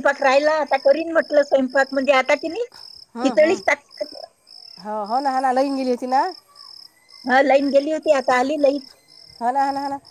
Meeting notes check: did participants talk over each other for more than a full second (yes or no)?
no